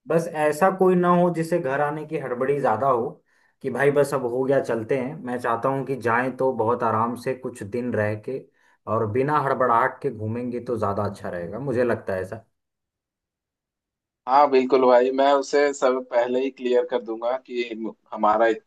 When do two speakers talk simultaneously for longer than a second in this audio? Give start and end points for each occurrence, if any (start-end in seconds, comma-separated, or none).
none